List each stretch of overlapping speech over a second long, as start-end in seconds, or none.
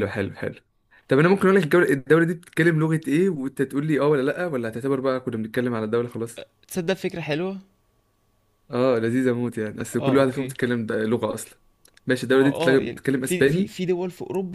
12.3-13.7